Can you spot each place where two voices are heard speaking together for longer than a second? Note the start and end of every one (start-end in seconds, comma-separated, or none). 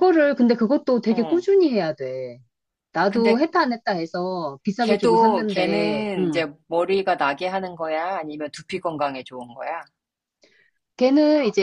4.8-6.4